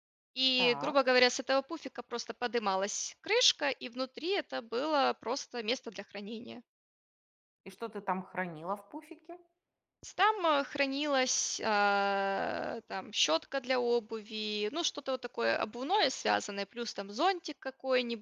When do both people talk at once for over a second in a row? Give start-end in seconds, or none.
none